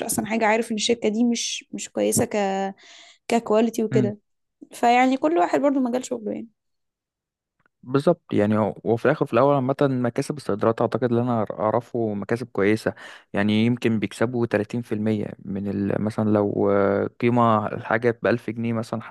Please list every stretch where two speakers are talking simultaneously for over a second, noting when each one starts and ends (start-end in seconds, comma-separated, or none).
none